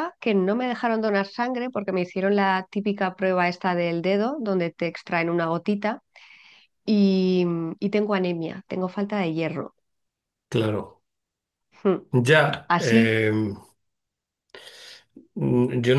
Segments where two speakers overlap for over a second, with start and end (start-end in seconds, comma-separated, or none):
none